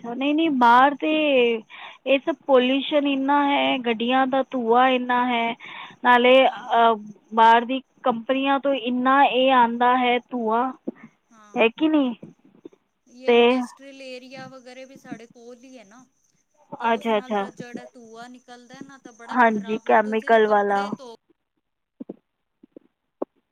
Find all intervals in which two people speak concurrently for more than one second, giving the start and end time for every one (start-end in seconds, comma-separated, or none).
19.4-20.8